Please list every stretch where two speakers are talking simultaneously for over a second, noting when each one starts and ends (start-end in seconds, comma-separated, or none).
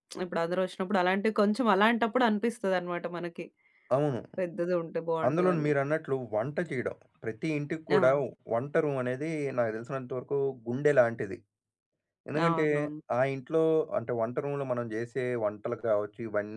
none